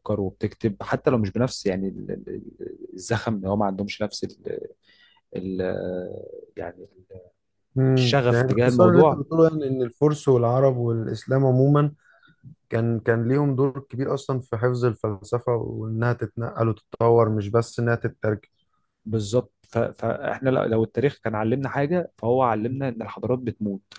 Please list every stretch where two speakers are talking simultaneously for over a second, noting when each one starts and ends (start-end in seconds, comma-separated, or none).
8.0-9.2